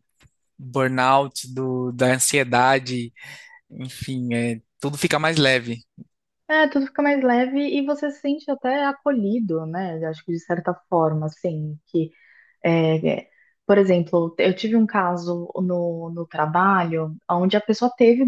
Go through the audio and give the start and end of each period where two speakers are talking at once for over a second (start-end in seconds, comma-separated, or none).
none